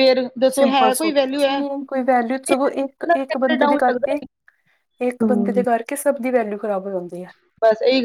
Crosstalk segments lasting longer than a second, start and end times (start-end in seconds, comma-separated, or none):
2.5-4.2